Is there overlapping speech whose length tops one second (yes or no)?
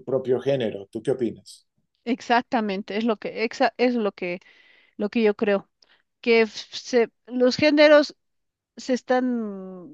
no